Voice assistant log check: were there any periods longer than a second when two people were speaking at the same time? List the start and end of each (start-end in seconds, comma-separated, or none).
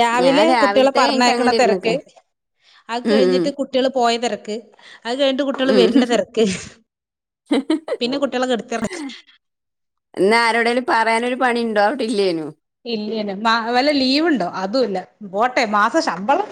0.6-1.9